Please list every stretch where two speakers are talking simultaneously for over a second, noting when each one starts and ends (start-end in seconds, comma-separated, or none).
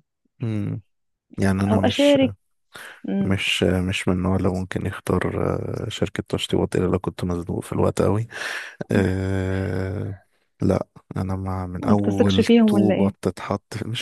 11.8-13.1